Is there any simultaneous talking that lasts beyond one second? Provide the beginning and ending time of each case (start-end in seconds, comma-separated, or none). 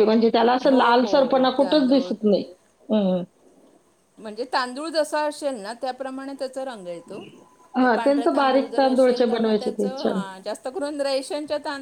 0.7-2.1, 7.8-9.7